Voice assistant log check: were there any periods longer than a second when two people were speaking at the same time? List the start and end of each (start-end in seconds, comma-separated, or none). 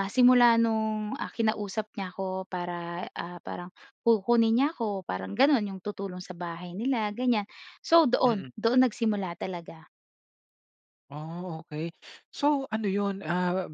none